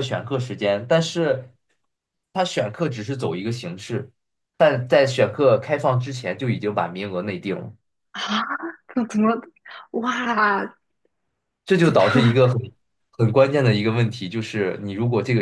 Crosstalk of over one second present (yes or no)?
no